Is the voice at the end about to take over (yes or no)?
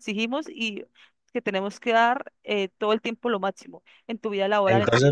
yes